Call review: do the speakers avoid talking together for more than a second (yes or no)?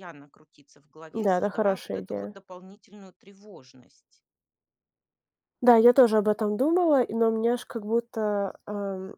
no